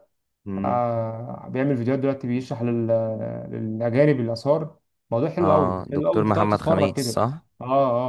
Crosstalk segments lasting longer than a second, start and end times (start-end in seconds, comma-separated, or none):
5.4-7.2